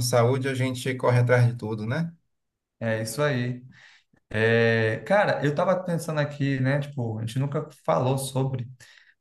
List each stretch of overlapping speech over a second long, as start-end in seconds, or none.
none